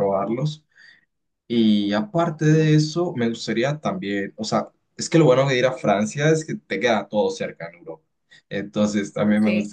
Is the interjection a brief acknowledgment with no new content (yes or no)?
yes